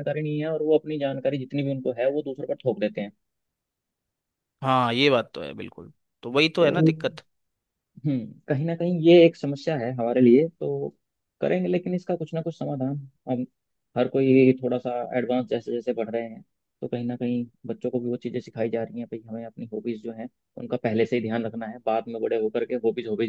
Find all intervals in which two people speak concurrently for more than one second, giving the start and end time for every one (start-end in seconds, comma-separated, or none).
none